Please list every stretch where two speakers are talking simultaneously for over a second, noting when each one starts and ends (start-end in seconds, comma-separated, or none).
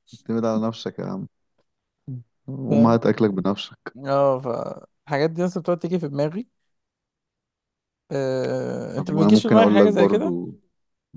8.9-10.3